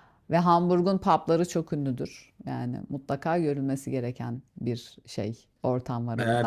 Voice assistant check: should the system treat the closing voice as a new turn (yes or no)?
yes